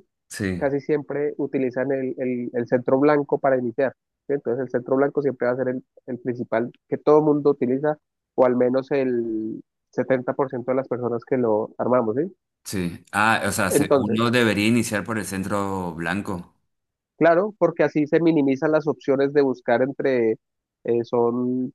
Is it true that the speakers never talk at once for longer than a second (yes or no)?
yes